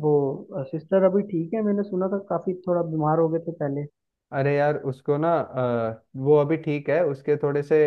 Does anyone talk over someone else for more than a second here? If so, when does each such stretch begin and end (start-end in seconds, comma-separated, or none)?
none